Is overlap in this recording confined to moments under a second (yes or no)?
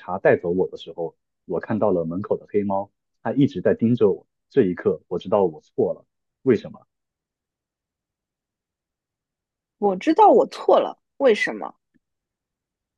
yes